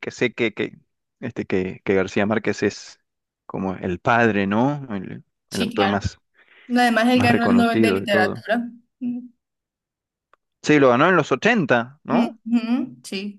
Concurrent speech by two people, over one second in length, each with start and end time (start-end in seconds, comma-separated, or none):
7.1-8.4